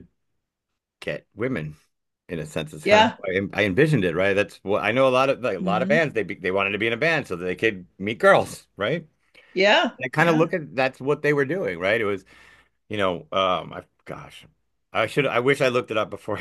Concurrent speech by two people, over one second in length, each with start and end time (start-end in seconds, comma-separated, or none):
none